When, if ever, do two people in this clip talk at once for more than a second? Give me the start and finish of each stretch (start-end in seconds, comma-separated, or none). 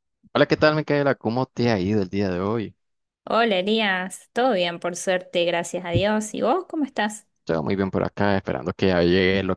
none